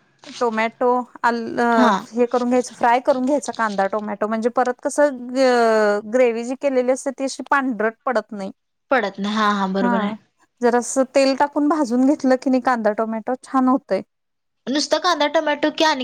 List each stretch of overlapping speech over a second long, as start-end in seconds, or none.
none